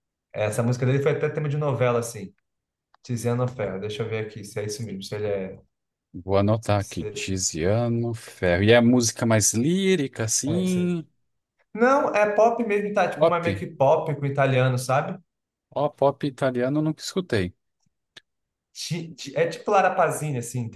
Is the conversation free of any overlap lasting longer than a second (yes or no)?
yes